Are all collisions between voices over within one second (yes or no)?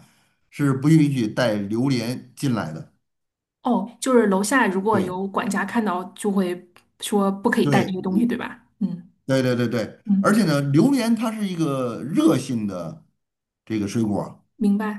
yes